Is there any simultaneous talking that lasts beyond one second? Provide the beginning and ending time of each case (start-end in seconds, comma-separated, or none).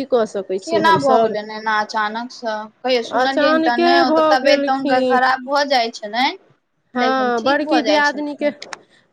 3.2-5.2, 7.0-8.5